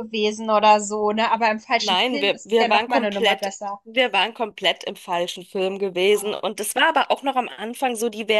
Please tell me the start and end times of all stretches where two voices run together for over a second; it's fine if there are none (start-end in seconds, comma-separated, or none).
1.8-3.8